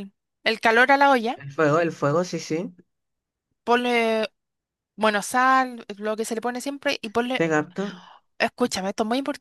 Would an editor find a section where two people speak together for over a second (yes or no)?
no